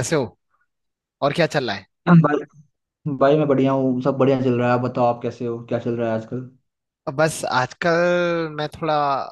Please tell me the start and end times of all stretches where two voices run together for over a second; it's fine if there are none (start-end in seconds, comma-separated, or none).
none